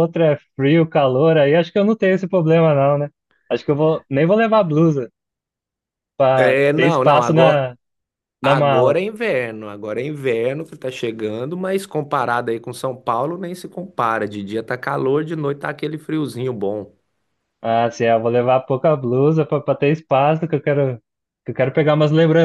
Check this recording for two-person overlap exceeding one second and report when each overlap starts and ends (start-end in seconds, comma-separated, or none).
6.3-7.7